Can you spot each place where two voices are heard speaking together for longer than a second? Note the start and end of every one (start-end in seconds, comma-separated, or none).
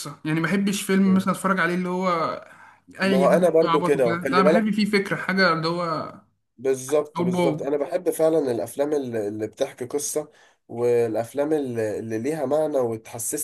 3.0-4.7